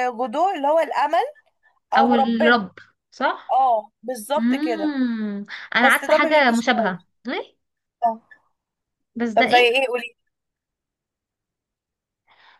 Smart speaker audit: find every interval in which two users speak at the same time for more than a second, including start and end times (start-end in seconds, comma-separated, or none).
5.8-7.1